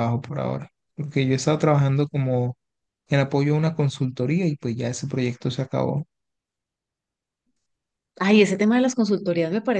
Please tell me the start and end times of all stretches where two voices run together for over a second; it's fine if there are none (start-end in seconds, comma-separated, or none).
none